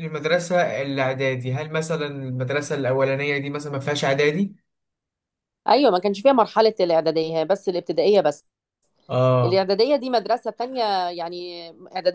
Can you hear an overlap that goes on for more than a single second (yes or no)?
no